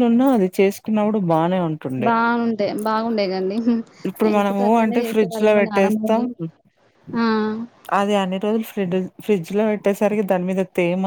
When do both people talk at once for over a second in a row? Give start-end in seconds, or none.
4.3-6.2